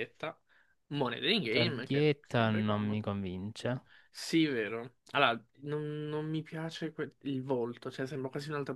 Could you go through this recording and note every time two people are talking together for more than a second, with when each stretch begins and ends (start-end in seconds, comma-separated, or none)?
1.4-3.0